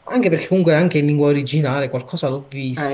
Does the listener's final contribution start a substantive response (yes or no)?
yes